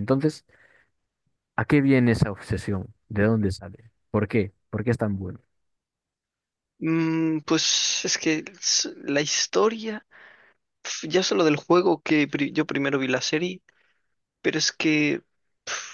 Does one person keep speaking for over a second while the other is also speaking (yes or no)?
no